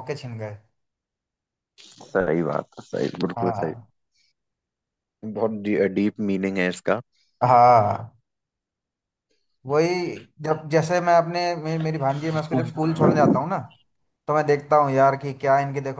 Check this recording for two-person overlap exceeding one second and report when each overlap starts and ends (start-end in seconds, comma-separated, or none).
none